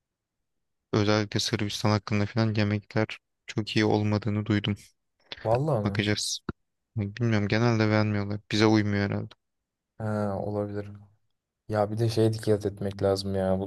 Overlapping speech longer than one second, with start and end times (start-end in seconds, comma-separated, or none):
none